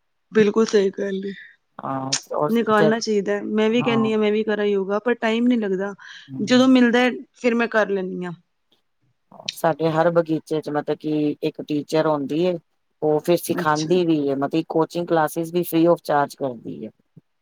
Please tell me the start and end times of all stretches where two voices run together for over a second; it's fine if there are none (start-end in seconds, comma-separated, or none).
none